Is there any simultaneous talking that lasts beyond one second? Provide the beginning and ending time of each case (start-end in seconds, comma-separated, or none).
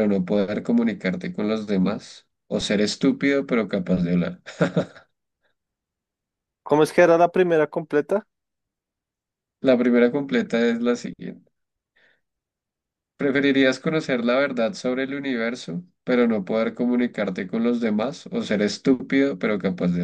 none